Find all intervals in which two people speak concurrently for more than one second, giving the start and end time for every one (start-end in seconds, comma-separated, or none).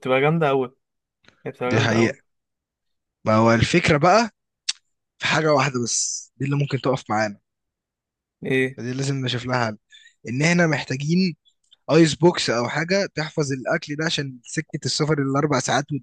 none